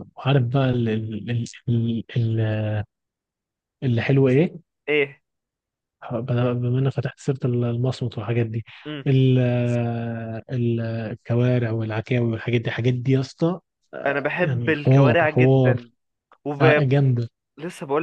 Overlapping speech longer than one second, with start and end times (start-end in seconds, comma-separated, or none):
14.1-15.8